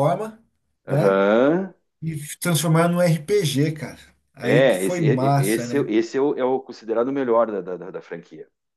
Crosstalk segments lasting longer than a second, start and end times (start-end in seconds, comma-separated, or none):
4.4-5.9